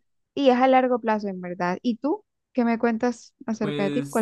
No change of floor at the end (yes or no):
no